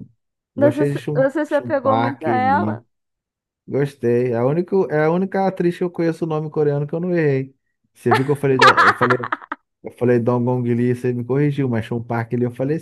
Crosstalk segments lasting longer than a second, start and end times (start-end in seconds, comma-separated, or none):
0.6-2.8